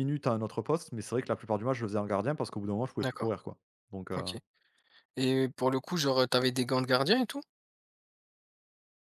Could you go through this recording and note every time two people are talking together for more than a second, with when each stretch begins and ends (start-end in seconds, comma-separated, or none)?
none